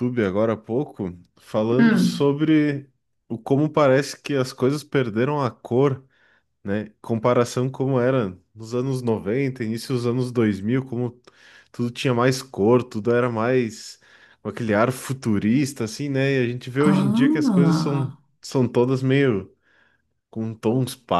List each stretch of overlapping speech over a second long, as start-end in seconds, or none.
16.9-18.2